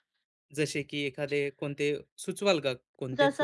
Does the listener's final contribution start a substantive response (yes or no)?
yes